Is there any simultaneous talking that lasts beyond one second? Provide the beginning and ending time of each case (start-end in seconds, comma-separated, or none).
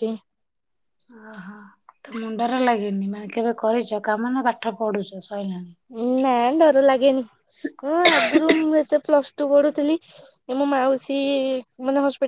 none